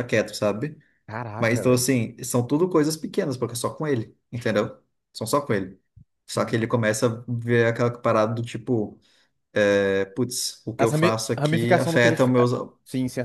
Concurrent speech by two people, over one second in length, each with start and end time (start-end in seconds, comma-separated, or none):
10.8-12.3